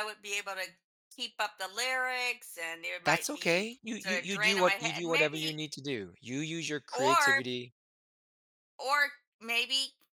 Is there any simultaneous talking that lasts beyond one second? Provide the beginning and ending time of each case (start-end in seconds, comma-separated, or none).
3.0-5.6